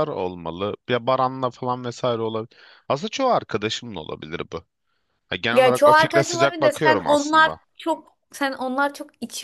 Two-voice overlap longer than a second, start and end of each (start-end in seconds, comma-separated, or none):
5.5-7.6